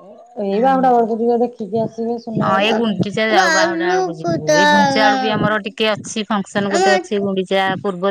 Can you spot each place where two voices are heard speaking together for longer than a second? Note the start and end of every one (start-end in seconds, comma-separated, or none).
3.4-5.1